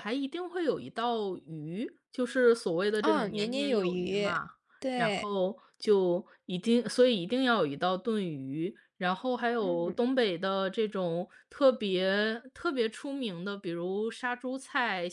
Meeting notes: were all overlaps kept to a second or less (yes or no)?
no